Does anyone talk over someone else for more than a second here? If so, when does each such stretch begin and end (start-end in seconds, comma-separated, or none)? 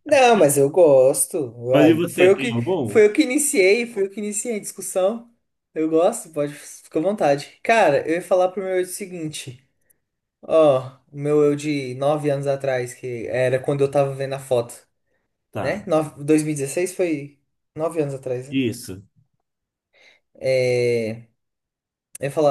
1.7-3.0